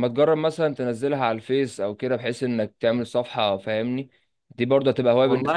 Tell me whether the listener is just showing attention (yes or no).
no